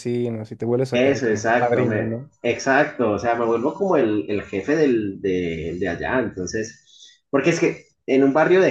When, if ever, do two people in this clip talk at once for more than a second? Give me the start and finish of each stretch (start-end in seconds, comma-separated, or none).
0.9-2.3